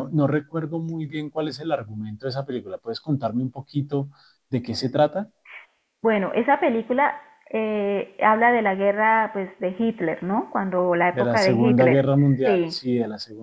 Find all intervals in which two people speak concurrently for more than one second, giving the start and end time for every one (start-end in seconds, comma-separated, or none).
11.1-12.8